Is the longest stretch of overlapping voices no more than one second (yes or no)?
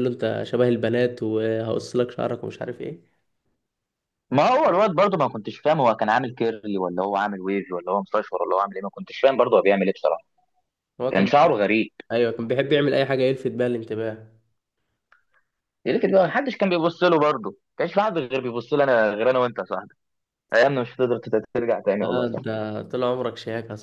yes